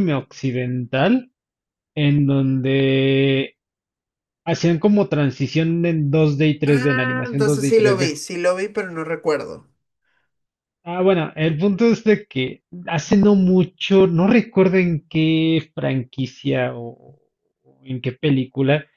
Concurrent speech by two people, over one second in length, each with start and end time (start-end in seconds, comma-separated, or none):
6.6-8.1